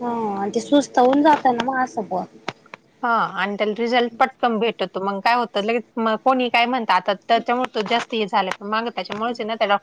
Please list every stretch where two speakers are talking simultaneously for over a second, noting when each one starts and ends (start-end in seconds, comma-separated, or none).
none